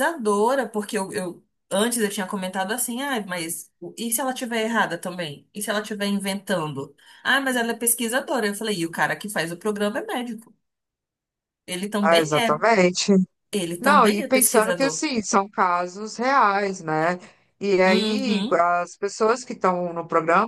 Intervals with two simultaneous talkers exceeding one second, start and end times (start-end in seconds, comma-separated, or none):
13.8-15.0